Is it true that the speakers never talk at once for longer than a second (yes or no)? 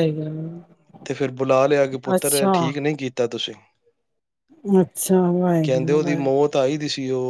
yes